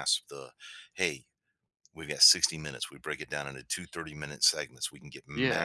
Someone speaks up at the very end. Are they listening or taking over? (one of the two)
listening